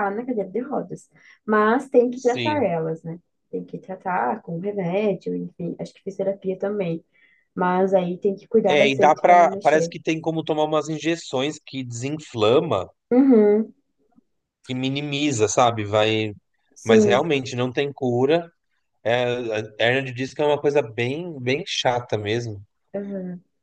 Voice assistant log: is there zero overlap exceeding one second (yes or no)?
no